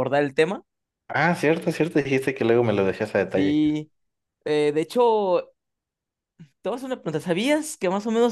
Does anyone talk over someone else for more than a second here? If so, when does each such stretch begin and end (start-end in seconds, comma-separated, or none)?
none